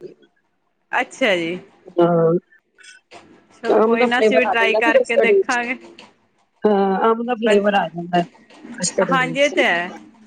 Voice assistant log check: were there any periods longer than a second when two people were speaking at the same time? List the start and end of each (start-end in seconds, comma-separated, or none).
3.8-5.6